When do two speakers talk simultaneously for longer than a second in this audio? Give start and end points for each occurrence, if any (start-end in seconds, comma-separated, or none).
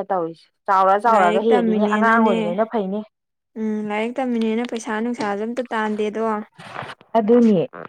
1.1-2.4